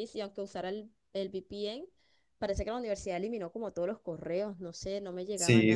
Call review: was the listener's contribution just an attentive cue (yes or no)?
no